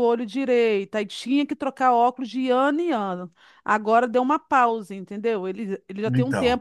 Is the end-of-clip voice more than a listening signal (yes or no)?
no